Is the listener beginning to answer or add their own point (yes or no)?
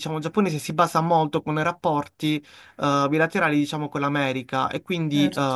no